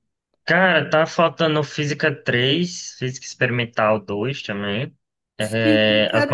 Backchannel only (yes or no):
no